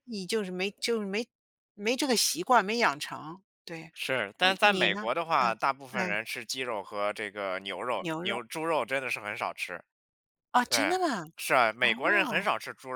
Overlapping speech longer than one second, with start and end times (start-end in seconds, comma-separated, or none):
4.4-6.2